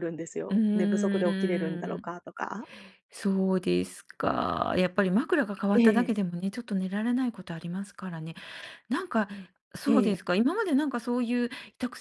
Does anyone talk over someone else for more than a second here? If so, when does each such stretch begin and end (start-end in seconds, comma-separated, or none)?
0.5-2.1